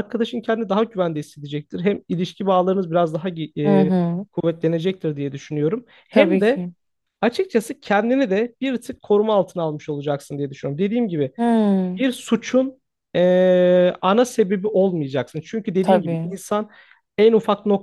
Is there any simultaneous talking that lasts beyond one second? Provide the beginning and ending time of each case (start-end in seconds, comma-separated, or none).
none